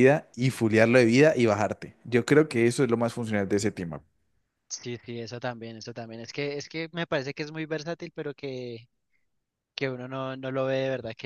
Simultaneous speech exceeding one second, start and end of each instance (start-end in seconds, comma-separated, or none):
none